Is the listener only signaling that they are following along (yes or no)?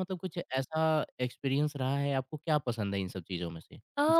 no